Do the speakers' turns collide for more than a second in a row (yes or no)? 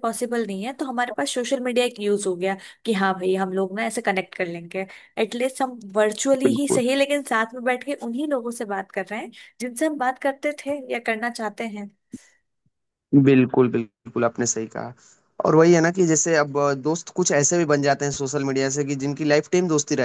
no